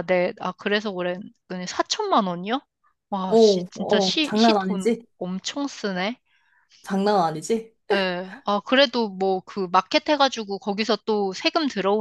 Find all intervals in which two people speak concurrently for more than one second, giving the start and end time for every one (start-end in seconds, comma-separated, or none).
3.3-5.0